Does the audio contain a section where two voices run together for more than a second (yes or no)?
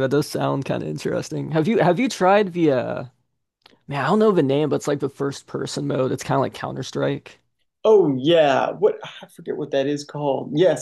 no